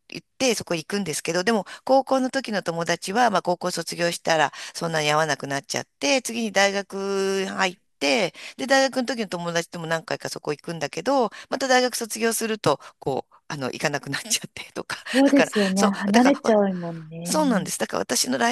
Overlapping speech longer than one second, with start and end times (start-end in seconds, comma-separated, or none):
15.1-16.6